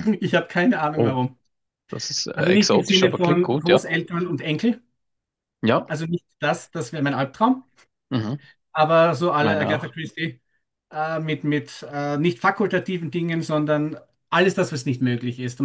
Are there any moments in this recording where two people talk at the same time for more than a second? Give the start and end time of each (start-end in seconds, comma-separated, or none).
2.3-3.9